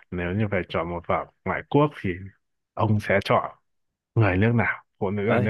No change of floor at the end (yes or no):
no